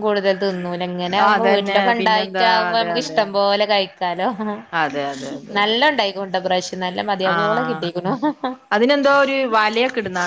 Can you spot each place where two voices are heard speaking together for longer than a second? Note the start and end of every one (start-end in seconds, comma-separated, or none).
1.2-3.4